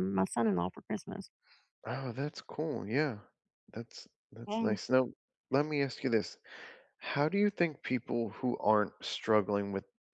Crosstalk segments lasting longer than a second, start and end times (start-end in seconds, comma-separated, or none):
none